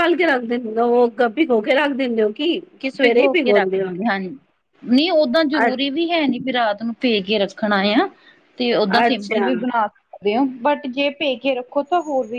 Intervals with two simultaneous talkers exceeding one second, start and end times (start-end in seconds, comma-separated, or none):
none